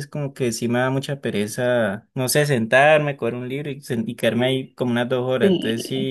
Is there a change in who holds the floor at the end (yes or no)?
no